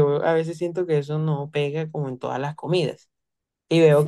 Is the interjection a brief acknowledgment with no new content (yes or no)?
no